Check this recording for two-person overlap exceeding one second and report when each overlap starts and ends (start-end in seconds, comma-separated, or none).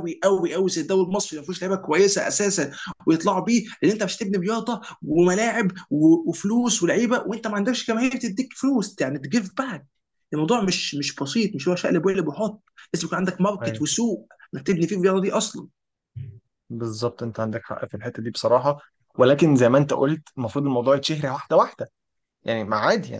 none